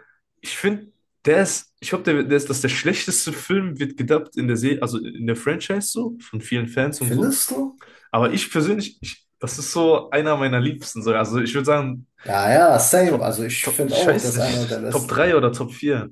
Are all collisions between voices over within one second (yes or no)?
no